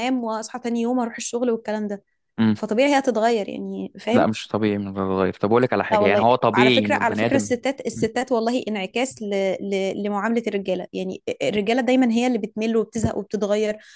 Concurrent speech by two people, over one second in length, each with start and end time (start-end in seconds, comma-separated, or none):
5.9-7.5